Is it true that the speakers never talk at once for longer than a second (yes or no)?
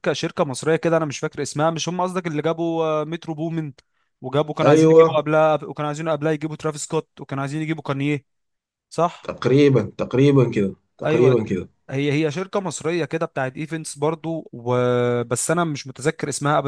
yes